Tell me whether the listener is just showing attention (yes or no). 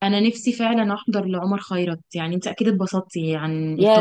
no